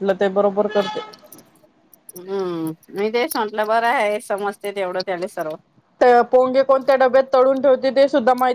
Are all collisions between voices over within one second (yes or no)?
yes